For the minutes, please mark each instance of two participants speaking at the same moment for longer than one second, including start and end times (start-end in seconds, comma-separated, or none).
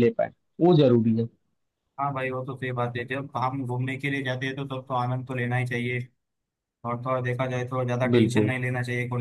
none